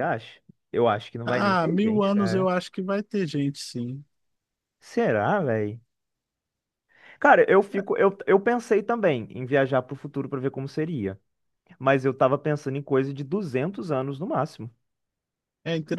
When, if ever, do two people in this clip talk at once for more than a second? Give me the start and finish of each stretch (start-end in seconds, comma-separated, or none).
1.2-2.5